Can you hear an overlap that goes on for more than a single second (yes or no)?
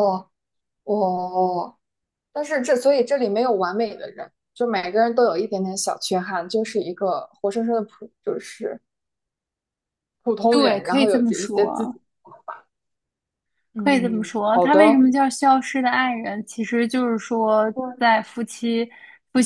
yes